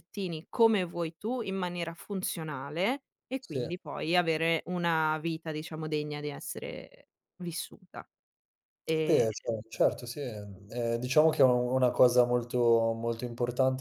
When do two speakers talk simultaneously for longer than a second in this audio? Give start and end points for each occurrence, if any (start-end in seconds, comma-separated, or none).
none